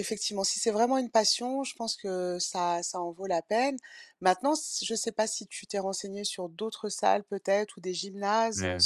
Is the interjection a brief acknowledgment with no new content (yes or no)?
yes